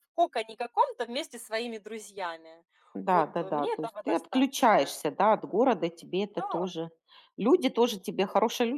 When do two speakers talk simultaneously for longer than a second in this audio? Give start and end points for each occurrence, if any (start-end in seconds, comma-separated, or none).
3.0-4.9